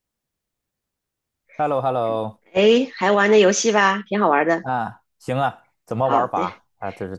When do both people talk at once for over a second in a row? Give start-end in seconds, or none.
none